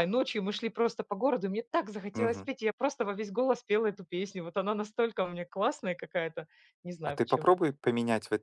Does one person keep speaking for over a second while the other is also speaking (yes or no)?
no